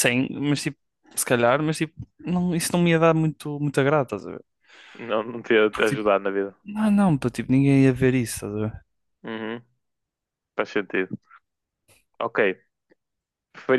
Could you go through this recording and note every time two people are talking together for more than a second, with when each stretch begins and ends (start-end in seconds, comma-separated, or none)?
none